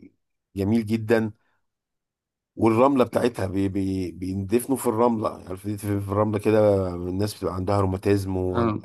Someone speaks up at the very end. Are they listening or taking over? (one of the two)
listening